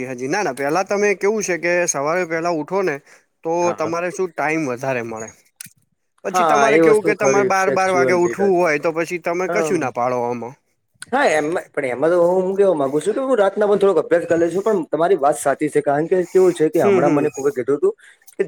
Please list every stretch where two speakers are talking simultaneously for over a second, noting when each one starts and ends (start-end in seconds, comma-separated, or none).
6.2-8.6